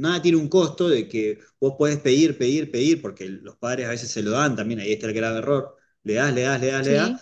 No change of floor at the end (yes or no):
yes